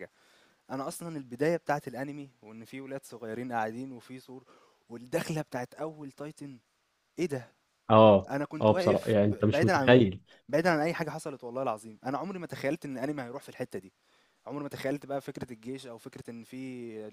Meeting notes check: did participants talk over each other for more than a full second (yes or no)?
yes